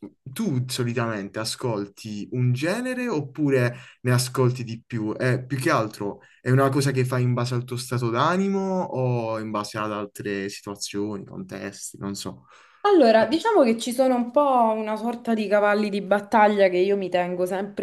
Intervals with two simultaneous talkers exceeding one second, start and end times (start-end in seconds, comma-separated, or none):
none